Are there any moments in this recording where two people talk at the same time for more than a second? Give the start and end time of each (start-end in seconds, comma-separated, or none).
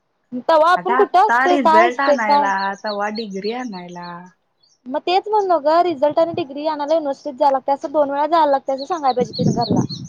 0.8-2.5